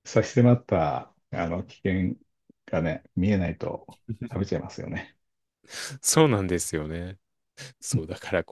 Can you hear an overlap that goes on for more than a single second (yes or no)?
no